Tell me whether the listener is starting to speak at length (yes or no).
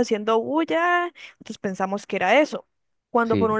no